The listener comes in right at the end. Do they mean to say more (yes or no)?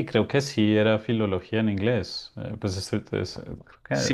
yes